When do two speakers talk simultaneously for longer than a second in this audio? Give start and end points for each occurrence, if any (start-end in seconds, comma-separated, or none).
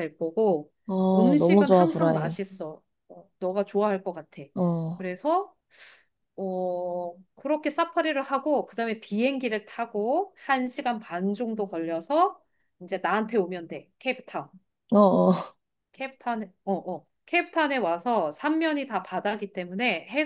1.1-2.4